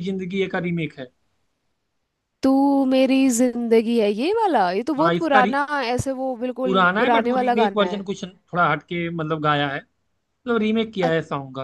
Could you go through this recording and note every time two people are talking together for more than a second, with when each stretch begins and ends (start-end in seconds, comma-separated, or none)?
6.6-8.0